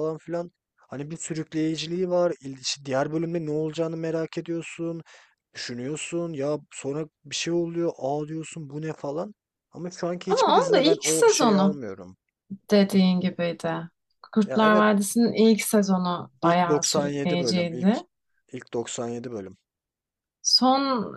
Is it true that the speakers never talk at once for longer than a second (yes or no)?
no